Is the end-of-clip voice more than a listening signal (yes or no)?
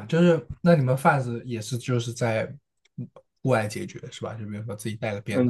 yes